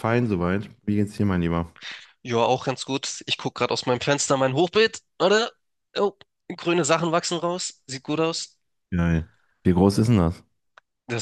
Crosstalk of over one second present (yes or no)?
no